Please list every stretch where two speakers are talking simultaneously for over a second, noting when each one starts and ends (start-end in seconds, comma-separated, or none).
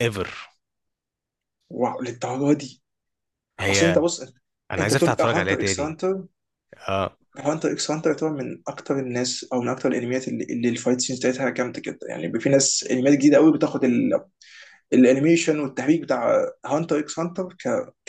4.8-6.0